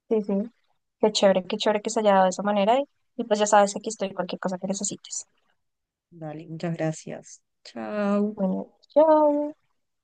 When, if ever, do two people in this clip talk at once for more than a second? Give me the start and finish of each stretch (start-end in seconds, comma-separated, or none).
none